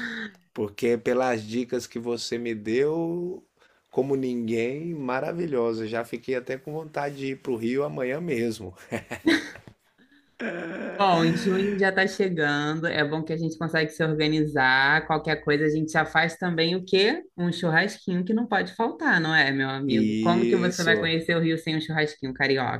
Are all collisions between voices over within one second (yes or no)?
no